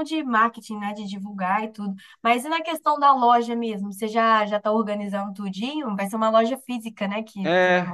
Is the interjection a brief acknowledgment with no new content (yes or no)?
no